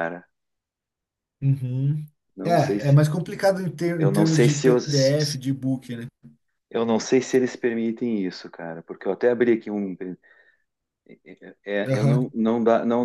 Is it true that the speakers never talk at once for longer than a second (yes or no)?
no